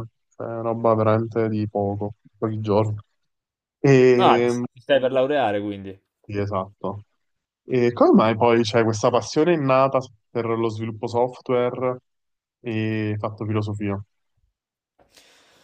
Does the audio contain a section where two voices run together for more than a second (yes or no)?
no